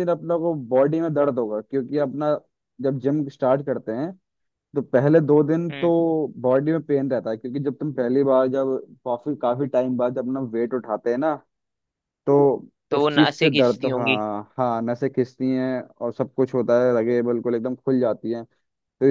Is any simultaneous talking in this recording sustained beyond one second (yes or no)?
yes